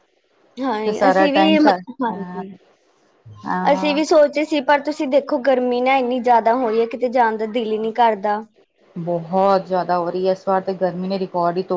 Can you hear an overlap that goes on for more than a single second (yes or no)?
yes